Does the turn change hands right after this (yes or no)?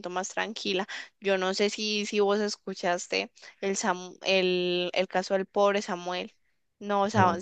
no